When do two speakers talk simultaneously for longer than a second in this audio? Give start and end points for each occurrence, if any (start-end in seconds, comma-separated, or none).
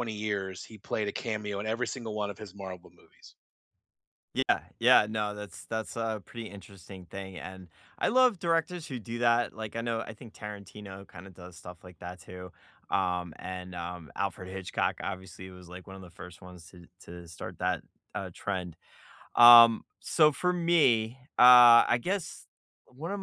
none